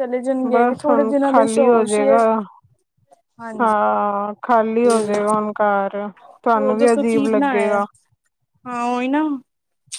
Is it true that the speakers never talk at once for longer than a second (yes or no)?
no